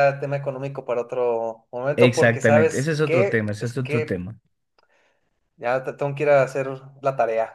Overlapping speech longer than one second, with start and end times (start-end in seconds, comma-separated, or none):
1.9-4.3